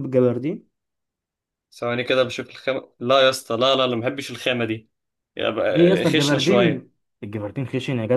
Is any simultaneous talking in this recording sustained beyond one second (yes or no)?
yes